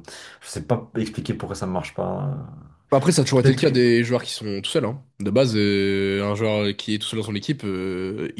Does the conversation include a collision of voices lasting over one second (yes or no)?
no